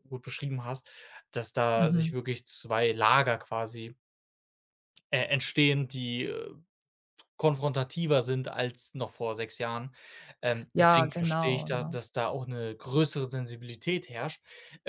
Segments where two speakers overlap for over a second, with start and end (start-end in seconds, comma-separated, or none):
10.7-12.0